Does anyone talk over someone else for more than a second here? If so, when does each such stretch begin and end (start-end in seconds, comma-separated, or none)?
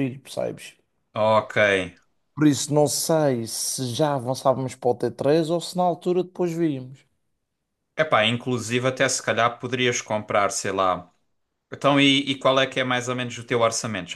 none